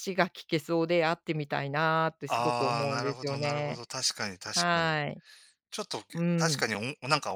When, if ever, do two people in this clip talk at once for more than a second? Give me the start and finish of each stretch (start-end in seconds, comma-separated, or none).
2.3-3.8